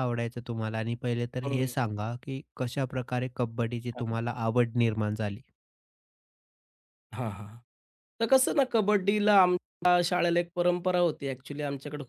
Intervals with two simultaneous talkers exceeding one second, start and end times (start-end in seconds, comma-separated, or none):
none